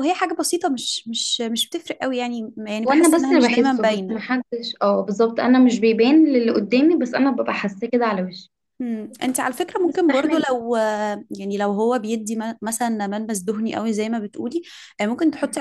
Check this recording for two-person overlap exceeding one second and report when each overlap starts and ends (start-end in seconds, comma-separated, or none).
2.9-4.2